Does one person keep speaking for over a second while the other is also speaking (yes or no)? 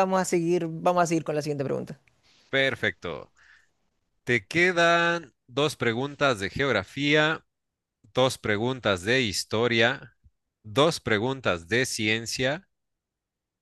no